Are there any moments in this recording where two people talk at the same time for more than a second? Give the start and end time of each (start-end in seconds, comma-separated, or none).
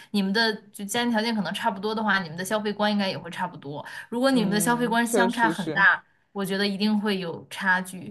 4.3-5.8